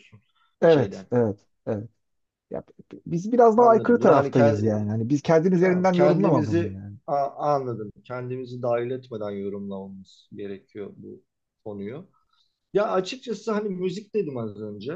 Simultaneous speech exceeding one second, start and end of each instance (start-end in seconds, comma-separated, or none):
3.6-4.9, 5.6-7.0